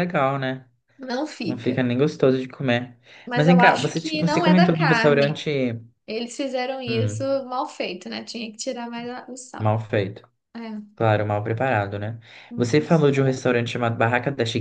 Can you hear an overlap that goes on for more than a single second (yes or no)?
yes